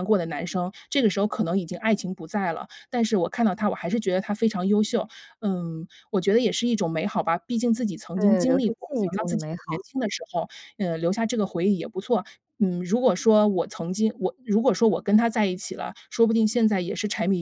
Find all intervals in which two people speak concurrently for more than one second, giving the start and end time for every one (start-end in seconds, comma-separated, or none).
8.2-9.8